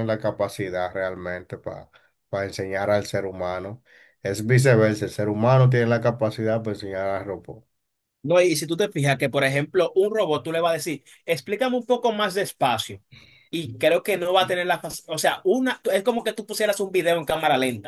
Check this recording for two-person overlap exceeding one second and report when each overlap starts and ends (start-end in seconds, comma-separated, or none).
none